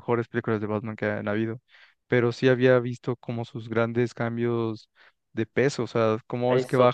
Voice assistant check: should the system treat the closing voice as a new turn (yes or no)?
no